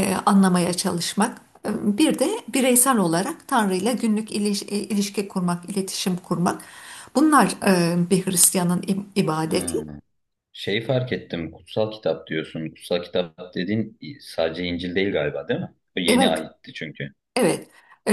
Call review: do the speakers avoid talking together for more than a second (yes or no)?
yes